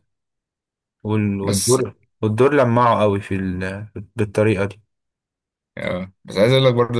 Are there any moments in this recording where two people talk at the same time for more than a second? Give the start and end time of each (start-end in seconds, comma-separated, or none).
none